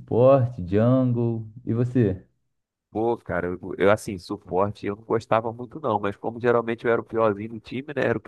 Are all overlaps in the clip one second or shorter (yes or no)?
yes